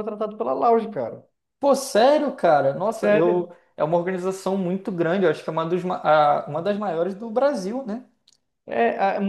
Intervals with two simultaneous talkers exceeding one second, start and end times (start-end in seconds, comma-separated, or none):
none